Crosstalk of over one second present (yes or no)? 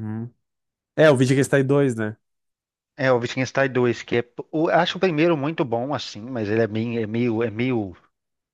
no